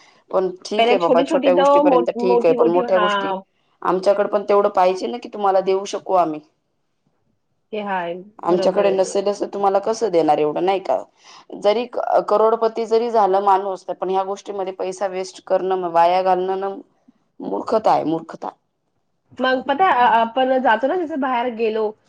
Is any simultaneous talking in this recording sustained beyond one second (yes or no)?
yes